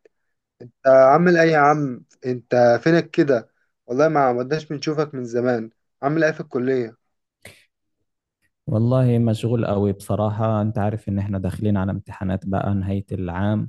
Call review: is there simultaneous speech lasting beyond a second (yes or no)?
no